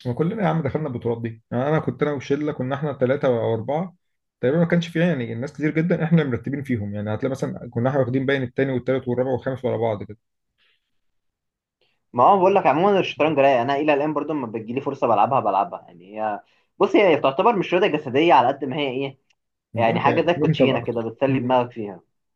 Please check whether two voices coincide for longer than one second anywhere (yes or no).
yes